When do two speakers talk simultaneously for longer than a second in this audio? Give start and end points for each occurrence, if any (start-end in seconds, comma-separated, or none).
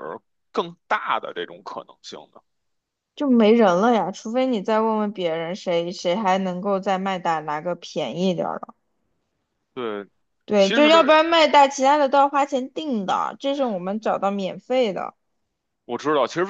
none